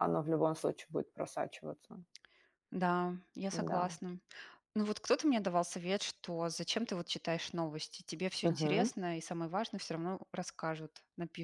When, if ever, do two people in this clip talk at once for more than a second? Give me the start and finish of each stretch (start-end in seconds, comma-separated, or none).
none